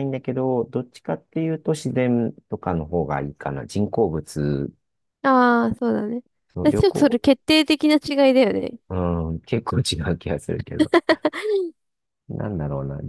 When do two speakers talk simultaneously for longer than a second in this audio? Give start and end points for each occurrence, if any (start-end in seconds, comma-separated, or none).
none